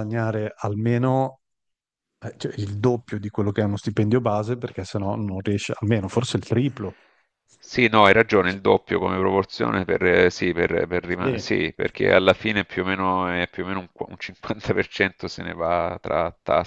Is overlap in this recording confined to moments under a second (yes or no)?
yes